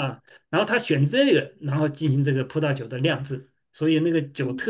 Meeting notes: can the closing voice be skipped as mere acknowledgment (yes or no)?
yes